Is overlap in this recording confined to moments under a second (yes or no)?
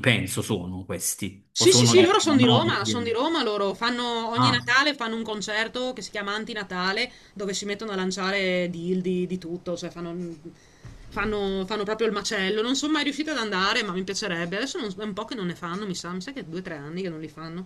no